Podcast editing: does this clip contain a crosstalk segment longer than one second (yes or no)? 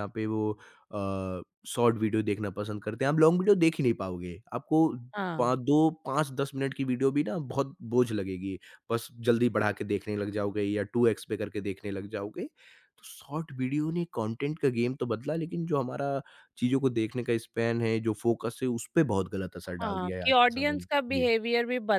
yes